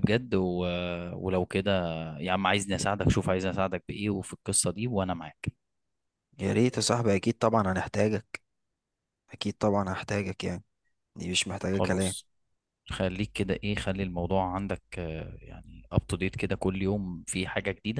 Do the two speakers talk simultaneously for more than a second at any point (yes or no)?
no